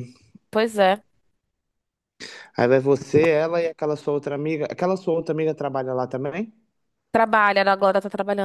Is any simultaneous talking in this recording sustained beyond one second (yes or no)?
no